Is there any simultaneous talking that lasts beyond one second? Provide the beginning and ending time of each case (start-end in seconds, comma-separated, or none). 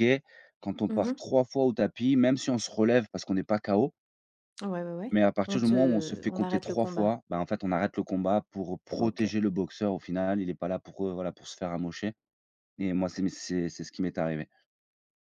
5.1-7.1